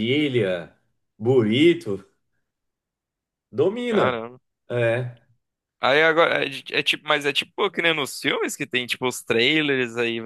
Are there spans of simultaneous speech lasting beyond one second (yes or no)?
no